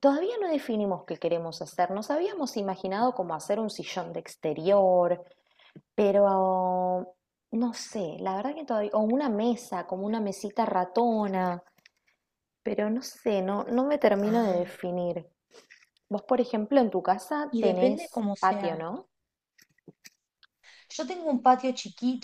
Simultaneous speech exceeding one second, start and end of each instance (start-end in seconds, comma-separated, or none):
17.5-18.8